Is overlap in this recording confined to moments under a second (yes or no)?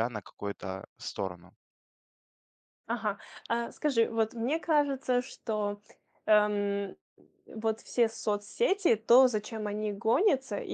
yes